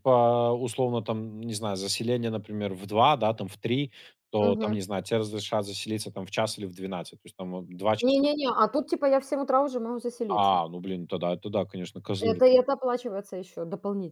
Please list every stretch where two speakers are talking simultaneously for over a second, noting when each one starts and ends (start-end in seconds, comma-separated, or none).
none